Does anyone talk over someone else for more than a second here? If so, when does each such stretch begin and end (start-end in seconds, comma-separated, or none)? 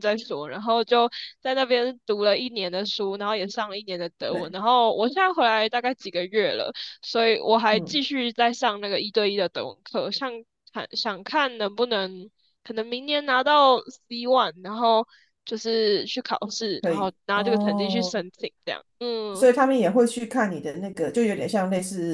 16.8-18.2